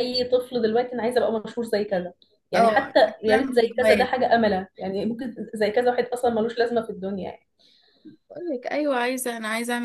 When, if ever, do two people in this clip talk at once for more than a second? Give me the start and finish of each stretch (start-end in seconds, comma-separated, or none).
2.5-4.2